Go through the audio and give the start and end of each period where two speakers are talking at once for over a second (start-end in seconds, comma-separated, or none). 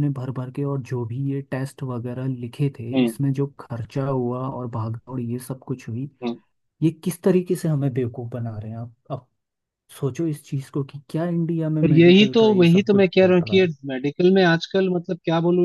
11.8-13.7